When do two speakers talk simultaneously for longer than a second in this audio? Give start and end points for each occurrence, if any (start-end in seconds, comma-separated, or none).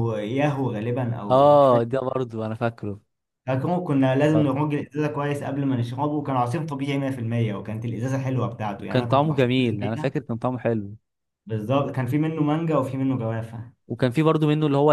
8.8-10.2